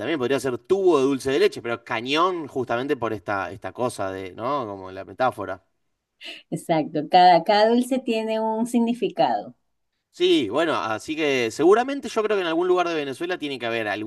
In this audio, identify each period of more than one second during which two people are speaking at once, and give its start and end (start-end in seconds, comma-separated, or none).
none